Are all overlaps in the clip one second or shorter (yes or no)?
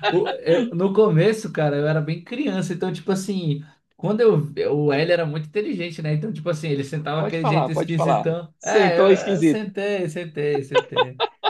no